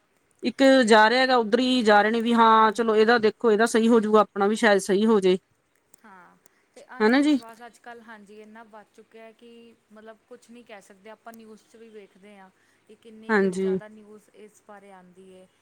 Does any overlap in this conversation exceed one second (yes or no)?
no